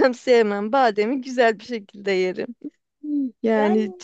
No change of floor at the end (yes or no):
yes